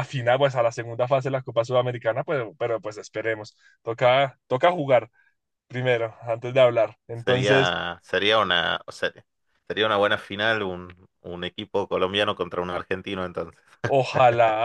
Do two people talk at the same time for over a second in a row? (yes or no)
no